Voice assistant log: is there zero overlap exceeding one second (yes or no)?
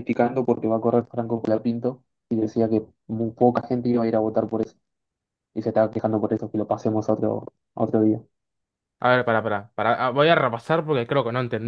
yes